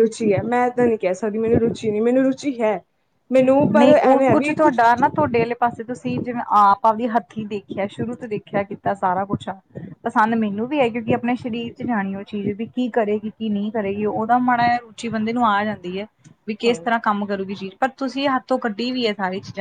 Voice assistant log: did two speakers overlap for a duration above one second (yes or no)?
no